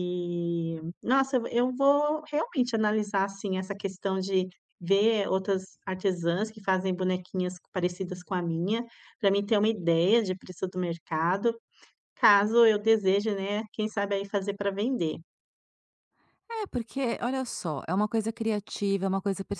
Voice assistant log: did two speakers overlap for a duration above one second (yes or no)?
no